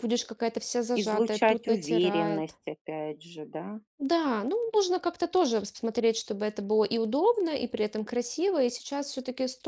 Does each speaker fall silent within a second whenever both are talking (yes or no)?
no